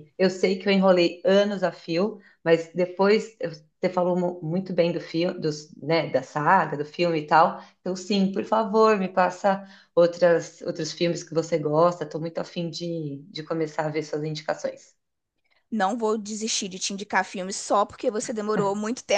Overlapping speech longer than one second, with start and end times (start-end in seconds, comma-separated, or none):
none